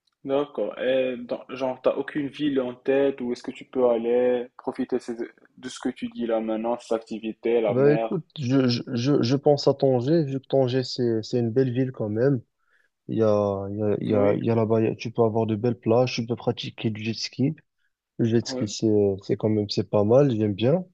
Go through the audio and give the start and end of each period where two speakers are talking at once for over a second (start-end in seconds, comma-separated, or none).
none